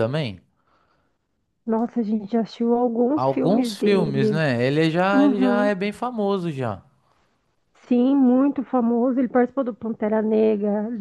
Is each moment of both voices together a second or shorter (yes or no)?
no